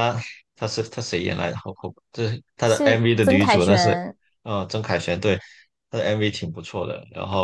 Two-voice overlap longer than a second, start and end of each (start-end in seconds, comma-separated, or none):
2.6-4.0